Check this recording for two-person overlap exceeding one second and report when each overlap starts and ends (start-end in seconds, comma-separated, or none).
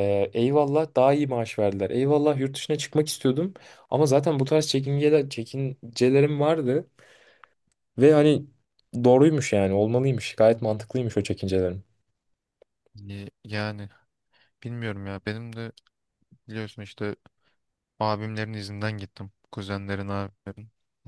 none